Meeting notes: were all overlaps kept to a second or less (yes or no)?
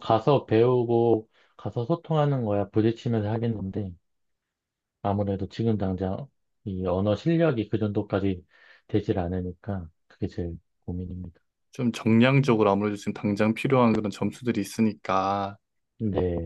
yes